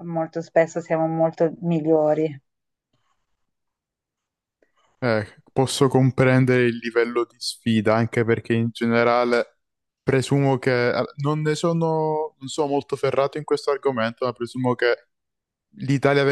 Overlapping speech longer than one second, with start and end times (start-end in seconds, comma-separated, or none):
none